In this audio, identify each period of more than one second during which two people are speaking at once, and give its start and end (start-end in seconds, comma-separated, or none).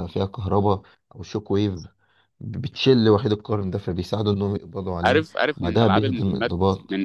5.0-6.5